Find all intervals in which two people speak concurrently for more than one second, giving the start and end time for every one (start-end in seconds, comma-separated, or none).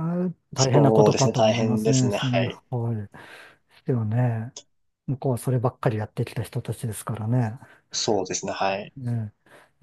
0.6-2.6